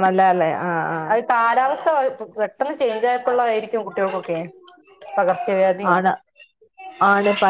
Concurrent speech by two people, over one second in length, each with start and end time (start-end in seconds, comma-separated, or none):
none